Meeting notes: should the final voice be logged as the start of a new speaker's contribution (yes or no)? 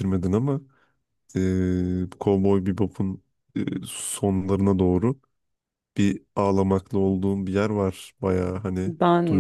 yes